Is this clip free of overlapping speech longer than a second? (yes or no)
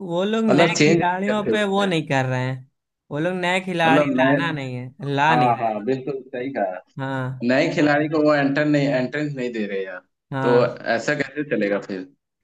no